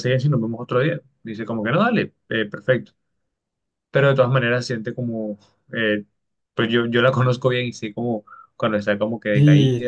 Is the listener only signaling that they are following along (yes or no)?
no